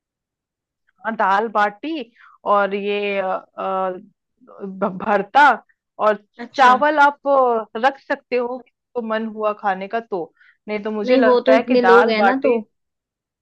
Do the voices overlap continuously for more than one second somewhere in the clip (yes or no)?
yes